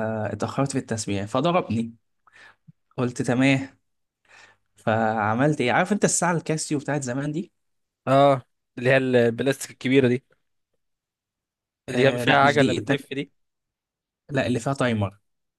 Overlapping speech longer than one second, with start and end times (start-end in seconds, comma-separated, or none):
11.9-13.2